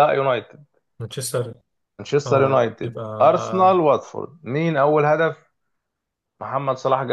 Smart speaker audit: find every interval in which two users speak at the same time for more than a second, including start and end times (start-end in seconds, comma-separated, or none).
2.3-3.8